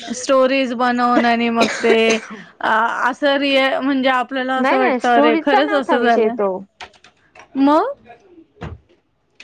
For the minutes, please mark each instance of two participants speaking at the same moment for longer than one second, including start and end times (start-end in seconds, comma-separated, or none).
4.6-6.3